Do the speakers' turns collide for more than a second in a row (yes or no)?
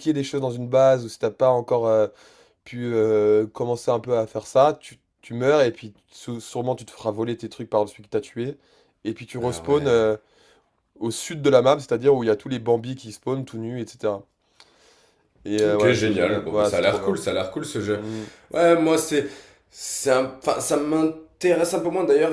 yes